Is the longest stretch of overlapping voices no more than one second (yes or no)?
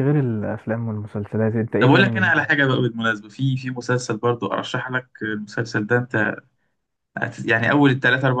yes